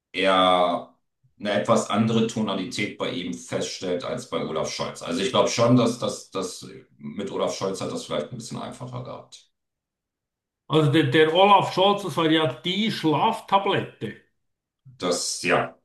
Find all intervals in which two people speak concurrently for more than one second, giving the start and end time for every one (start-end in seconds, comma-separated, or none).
none